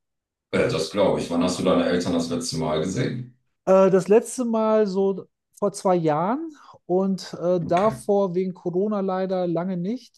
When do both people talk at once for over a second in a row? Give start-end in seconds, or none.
none